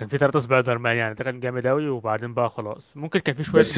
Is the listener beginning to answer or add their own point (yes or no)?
yes